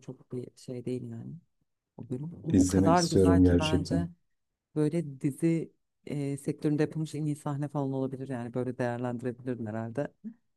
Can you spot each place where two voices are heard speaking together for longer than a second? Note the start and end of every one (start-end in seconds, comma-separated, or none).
2.5-4.1